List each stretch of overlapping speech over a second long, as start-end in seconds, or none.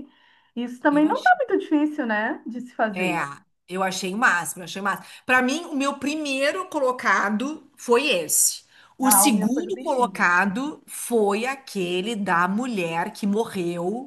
9.0-10.3